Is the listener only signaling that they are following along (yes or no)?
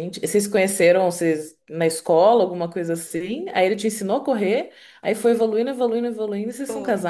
no